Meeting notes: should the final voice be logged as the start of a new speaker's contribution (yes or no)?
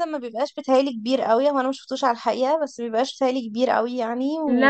yes